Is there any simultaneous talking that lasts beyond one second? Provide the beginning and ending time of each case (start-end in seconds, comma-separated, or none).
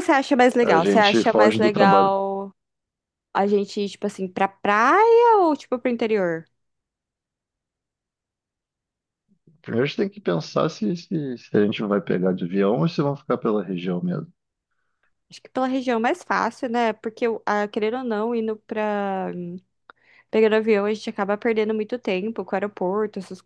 0.6-2.2